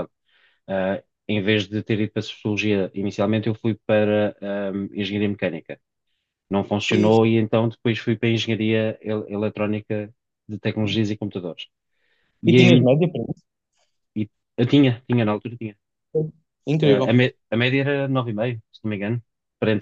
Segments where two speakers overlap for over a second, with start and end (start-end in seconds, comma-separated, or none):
none